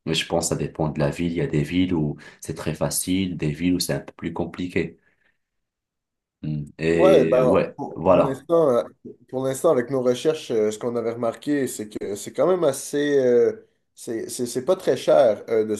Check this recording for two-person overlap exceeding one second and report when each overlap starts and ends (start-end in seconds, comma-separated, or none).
6.9-8.4